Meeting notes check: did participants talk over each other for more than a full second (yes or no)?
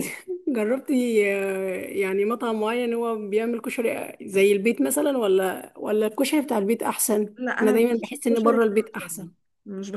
yes